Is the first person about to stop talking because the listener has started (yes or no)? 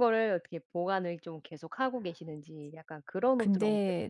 yes